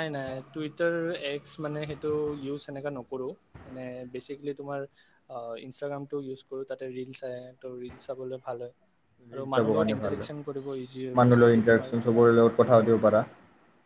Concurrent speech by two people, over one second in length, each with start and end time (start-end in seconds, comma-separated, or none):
9.3-11.9